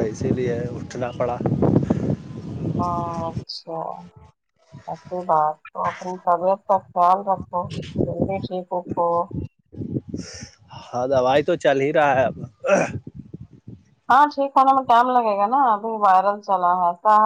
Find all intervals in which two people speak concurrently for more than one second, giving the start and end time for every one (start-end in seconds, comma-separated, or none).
none